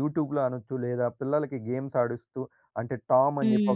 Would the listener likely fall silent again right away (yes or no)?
yes